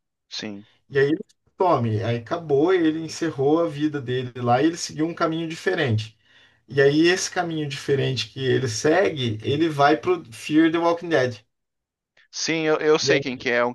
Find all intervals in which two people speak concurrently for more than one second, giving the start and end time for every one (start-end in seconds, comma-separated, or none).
none